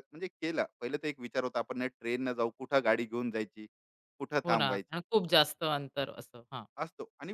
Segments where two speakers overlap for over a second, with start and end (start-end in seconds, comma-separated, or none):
none